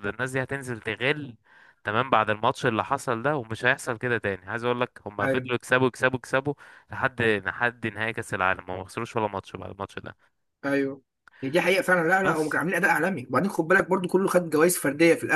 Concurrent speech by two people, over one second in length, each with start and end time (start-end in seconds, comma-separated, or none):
none